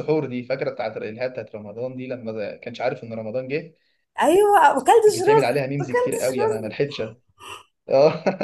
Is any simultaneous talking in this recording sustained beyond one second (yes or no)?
yes